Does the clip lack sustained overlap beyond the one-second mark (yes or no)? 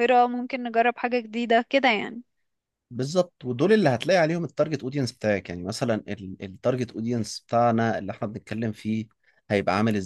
yes